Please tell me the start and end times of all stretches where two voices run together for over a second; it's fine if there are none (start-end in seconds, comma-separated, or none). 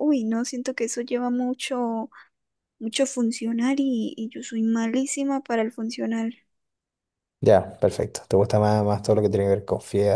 none